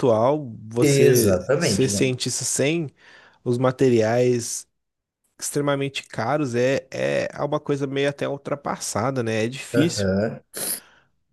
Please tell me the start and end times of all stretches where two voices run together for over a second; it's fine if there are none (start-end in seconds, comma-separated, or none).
0.8-2.1